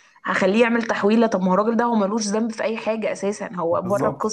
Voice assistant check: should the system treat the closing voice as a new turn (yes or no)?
yes